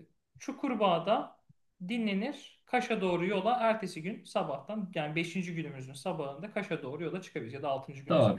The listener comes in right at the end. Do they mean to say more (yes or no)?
yes